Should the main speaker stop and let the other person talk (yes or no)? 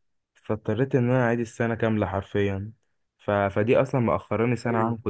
no